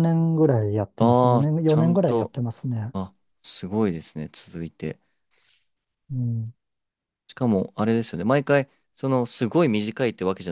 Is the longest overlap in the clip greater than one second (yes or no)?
yes